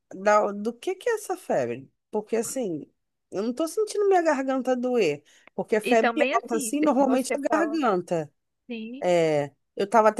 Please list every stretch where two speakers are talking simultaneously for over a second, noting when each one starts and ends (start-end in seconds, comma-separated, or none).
5.8-7.8